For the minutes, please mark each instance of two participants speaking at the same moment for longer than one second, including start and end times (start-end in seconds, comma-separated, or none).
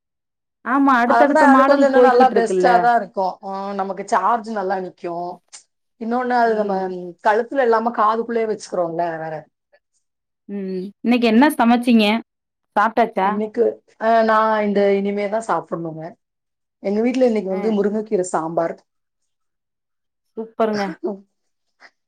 1.1-2.7